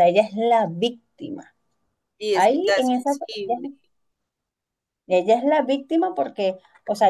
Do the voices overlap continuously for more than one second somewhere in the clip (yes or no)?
yes